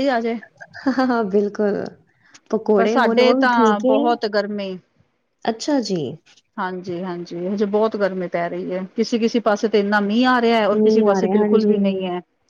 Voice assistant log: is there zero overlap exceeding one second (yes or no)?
no